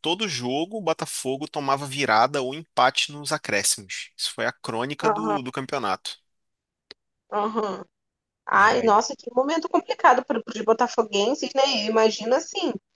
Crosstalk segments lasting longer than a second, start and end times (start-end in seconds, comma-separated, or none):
none